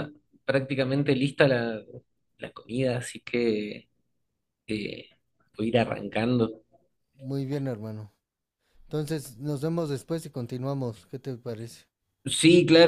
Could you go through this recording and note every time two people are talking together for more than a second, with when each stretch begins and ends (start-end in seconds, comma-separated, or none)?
none